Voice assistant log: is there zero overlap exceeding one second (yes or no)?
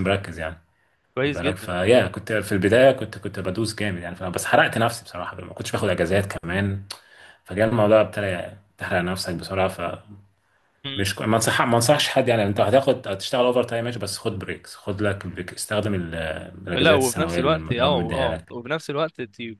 no